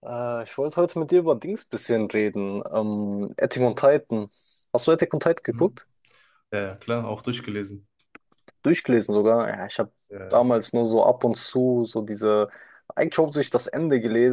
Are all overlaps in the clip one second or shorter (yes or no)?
yes